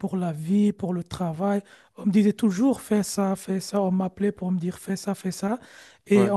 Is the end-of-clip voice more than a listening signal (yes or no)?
no